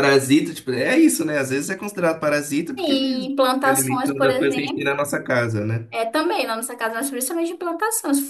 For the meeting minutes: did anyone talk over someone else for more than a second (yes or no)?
yes